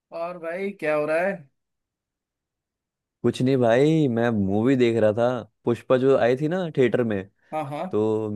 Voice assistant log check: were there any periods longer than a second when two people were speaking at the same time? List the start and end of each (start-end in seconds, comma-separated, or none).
none